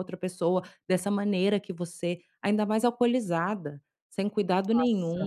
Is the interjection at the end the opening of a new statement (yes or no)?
yes